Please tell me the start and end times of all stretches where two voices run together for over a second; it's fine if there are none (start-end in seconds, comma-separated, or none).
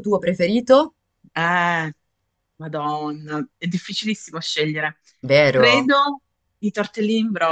none